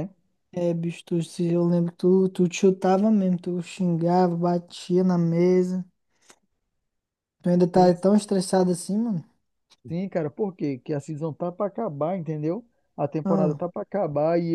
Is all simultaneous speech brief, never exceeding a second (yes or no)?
yes